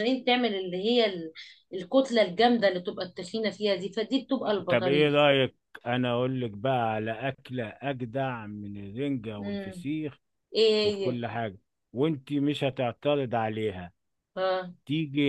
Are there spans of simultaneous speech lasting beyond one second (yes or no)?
no